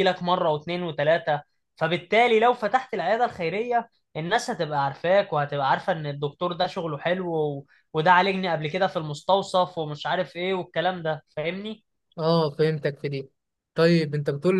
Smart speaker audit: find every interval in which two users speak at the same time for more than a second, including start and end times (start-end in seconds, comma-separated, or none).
none